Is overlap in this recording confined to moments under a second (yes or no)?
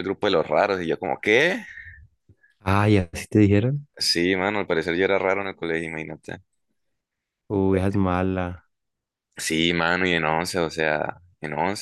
yes